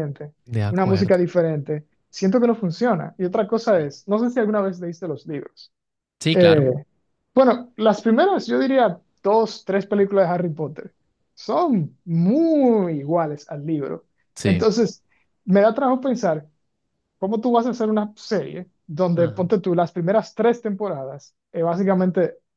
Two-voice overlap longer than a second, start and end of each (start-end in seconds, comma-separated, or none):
none